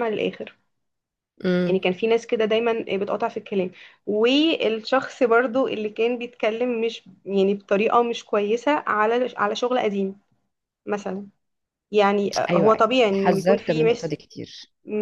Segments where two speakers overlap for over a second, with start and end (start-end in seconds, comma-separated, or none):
12.5-14.1